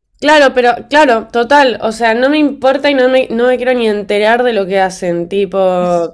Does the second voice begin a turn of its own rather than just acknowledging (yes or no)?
no